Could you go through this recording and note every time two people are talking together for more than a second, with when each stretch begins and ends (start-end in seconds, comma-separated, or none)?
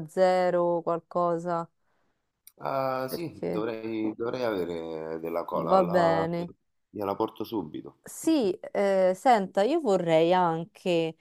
none